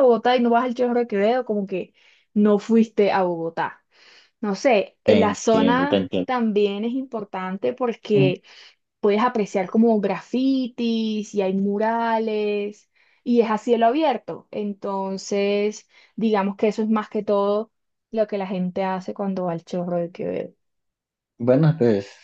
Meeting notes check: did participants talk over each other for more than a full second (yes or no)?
yes